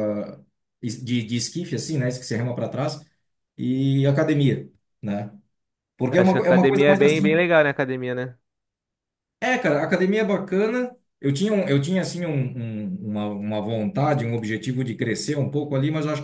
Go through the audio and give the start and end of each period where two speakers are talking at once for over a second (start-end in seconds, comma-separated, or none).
6.2-7.4